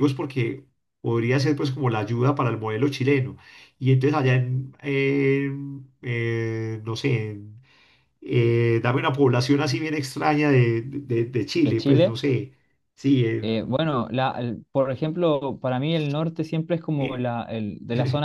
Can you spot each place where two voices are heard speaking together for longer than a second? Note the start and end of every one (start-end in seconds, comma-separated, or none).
none